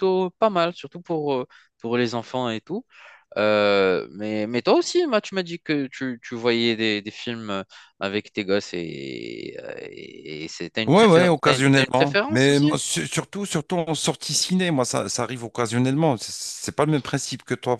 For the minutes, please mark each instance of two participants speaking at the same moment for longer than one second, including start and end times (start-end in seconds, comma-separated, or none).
10.9-12.7